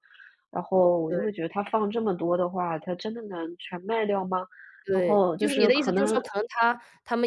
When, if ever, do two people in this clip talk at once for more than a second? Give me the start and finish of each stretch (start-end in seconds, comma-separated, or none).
4.9-6.2